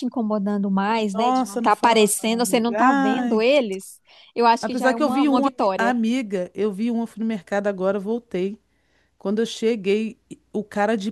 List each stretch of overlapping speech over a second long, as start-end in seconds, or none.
1.1-3.5, 4.6-6.0